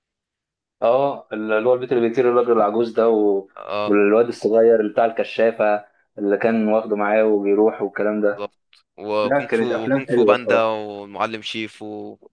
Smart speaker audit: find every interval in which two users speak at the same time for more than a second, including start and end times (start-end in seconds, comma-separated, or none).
9.2-10.8